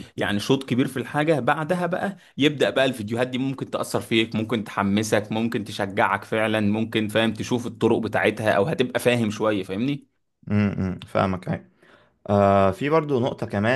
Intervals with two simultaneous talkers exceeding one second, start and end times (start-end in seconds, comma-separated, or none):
none